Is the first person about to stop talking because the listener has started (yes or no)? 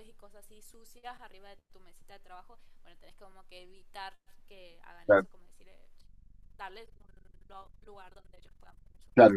yes